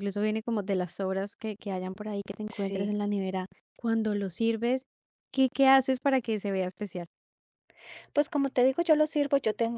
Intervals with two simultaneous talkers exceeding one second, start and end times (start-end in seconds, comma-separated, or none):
none